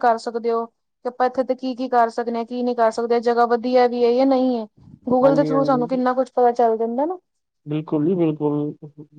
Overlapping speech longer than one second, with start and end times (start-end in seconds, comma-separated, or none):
none